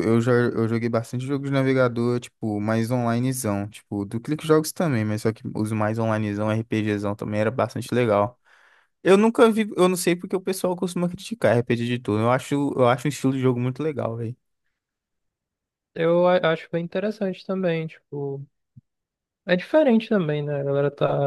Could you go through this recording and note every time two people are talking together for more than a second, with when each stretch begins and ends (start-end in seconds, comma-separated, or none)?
none